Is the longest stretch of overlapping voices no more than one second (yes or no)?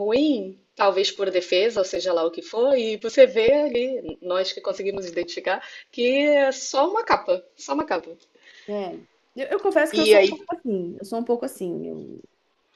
yes